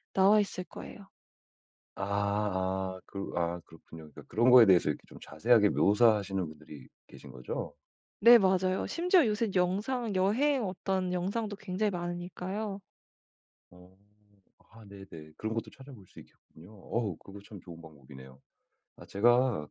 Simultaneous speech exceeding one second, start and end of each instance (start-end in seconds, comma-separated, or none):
none